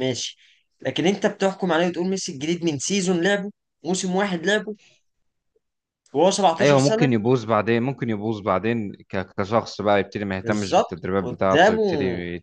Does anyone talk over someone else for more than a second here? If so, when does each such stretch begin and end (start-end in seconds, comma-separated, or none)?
10.4-11.8